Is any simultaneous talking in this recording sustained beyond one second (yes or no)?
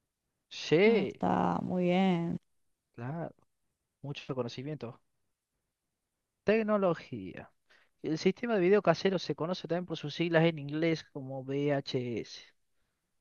no